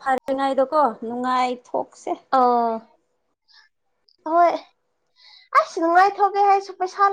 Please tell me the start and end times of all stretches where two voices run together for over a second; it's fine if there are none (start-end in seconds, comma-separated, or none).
none